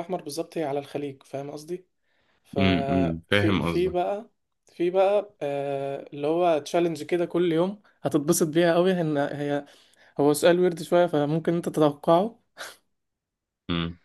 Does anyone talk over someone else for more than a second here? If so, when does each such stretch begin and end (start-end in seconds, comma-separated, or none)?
2.6-4.0